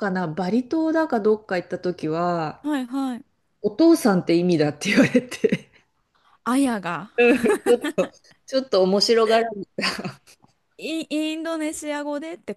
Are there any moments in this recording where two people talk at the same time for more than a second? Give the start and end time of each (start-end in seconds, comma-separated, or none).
none